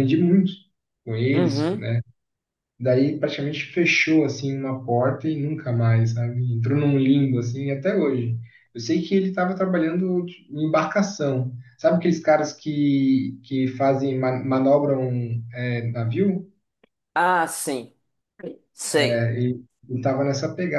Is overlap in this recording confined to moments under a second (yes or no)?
yes